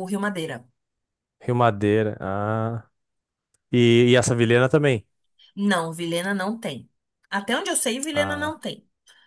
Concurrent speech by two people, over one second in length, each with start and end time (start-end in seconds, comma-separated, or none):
none